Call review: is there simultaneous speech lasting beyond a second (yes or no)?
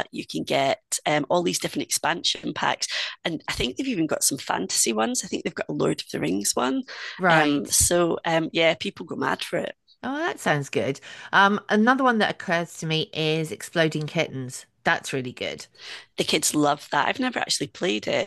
no